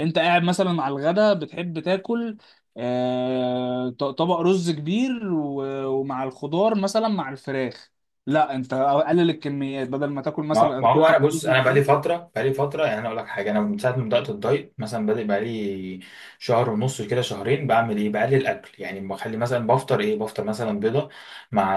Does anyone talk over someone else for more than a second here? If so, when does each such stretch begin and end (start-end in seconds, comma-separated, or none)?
10.5-12.0